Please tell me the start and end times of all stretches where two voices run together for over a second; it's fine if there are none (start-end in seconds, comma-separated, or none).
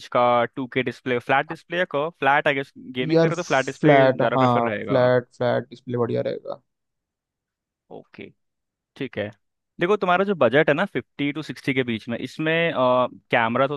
3.1-5.0